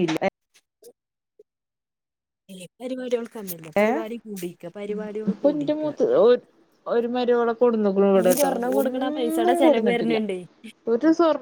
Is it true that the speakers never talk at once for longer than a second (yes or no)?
no